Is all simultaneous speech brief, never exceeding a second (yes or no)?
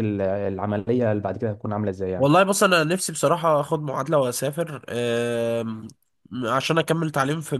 yes